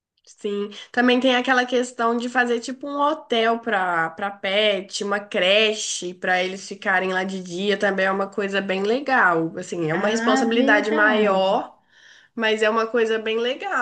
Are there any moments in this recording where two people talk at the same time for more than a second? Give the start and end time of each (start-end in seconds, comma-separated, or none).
9.9-11.6